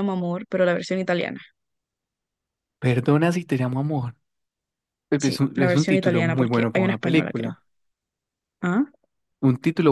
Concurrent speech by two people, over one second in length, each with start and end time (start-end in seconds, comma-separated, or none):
5.2-7.5